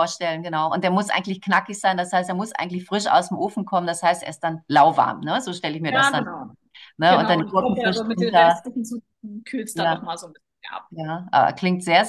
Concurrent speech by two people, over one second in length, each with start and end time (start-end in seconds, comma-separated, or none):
7.1-8.6